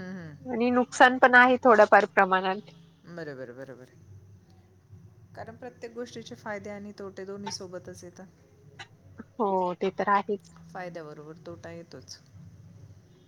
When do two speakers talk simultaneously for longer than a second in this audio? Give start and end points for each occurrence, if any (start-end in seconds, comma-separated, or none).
none